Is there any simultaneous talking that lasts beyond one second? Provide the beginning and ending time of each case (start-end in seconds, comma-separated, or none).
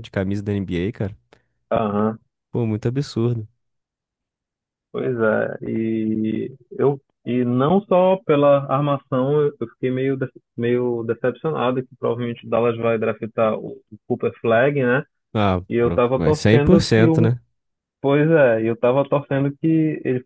15.7-17.3